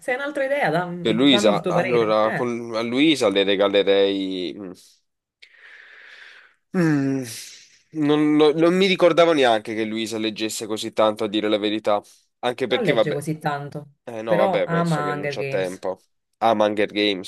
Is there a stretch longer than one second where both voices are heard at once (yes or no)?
yes